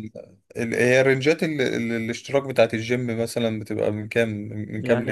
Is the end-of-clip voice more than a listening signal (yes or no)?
yes